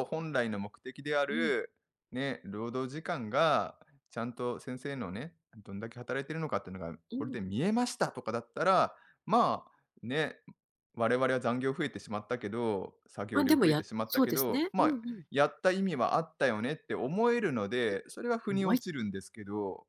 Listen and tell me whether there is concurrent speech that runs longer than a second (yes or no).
yes